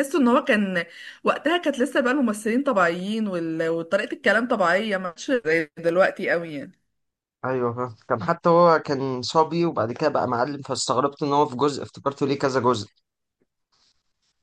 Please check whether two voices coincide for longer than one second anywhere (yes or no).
no